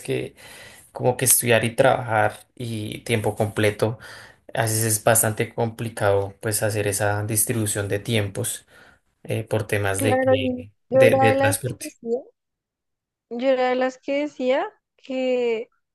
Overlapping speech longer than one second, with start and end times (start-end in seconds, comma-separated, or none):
10.0-12.0